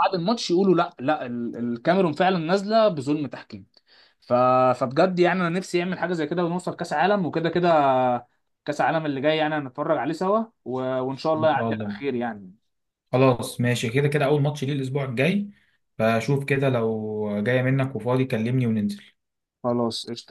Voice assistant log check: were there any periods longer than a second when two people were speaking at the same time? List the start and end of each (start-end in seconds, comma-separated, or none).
none